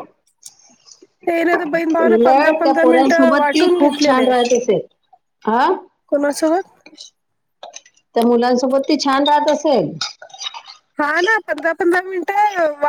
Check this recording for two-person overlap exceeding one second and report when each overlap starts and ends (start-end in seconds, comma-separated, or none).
2.0-4.2